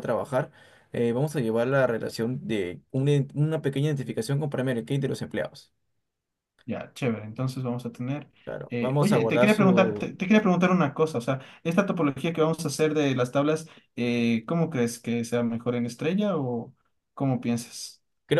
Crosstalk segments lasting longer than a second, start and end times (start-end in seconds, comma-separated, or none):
8.7-10.1